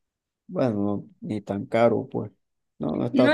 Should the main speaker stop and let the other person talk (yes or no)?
yes